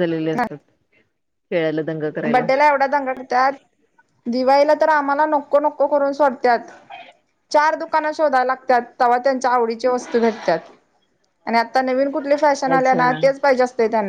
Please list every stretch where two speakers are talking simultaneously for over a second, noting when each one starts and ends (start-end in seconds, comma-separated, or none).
none